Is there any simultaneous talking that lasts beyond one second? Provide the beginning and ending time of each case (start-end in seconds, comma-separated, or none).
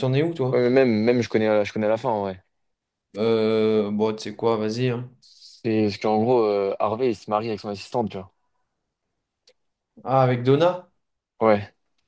none